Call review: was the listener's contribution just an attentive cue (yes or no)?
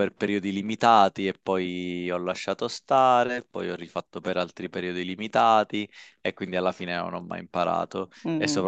yes